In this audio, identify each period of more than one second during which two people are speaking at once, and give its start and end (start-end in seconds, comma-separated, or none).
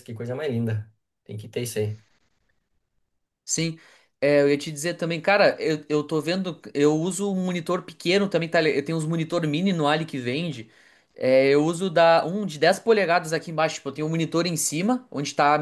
none